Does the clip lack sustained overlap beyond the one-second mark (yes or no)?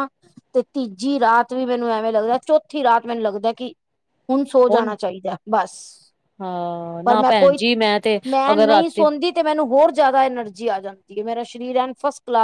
yes